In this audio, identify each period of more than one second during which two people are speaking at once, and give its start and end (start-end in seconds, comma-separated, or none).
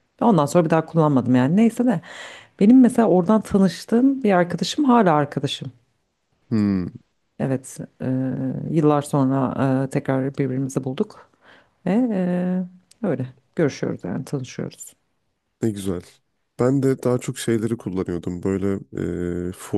none